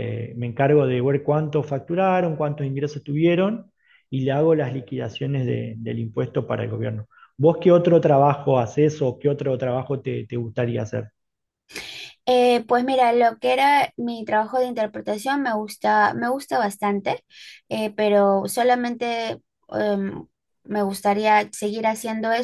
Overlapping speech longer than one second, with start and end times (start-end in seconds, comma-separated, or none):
none